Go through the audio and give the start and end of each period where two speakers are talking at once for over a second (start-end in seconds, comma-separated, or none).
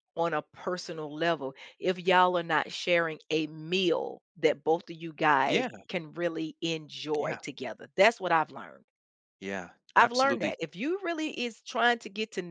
none